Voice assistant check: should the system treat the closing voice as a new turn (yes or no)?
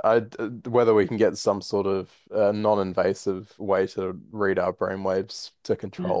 no